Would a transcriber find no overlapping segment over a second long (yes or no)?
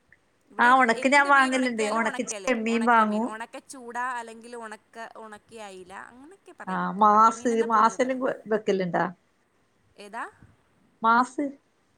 no